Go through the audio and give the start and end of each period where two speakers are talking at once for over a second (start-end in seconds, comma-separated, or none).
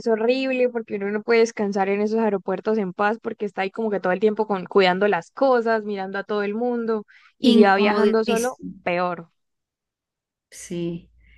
7.5-8.7